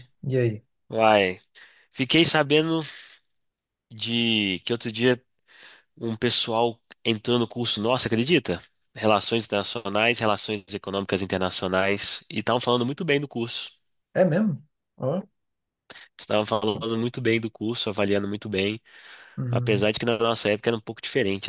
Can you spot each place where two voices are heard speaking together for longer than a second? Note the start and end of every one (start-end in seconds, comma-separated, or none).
none